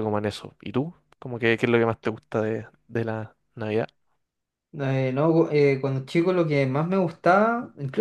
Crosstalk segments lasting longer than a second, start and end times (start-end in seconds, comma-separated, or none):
none